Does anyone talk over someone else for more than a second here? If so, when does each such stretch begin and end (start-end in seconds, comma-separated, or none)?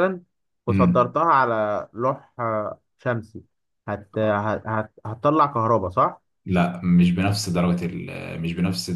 none